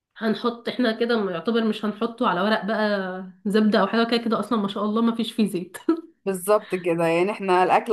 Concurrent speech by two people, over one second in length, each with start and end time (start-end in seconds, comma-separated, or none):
none